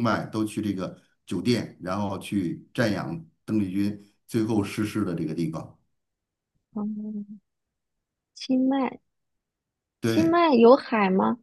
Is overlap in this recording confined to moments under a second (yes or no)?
yes